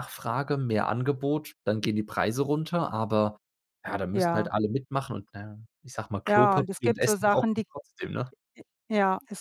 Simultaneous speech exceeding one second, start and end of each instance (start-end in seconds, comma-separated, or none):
6.3-7.7